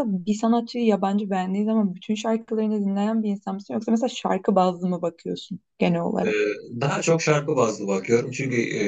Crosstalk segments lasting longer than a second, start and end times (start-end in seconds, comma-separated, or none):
none